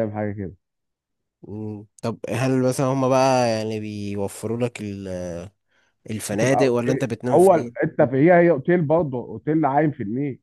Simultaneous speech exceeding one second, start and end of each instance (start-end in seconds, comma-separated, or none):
6.3-7.8